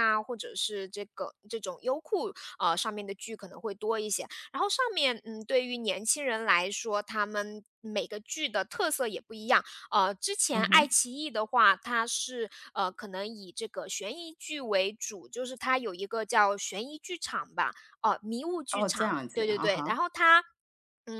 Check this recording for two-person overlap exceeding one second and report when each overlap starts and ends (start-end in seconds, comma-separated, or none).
18.7-20.0